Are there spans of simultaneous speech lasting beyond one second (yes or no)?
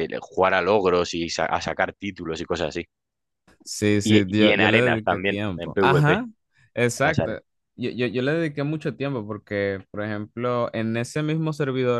yes